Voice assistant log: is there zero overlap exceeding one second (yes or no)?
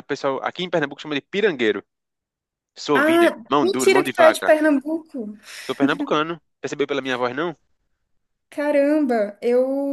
no